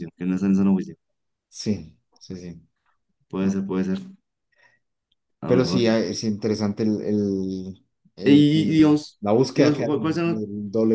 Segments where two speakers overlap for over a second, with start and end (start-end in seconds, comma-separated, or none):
8.2-10.4